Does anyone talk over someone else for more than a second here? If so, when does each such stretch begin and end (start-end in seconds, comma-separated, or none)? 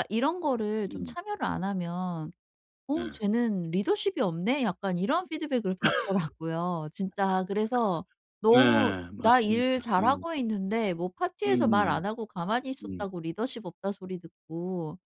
8.5-10.2